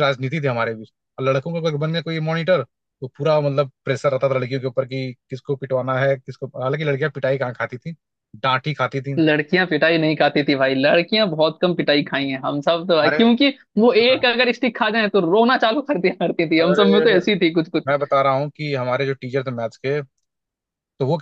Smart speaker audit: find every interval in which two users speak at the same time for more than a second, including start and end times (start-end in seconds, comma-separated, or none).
none